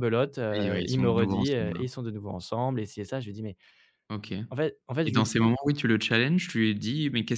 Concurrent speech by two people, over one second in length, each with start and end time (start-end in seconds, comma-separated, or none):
0.5-1.8